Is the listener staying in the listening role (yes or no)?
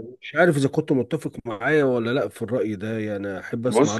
no